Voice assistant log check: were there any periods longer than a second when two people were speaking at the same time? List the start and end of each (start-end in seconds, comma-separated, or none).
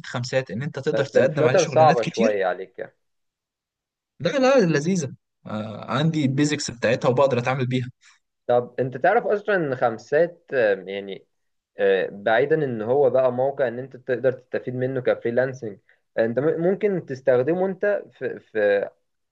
0.9-2.5